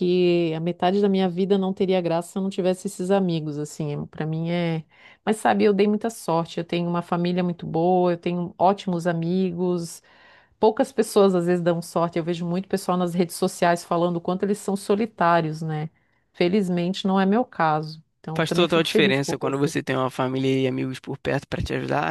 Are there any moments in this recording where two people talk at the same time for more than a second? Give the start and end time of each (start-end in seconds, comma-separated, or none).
18.4-19.7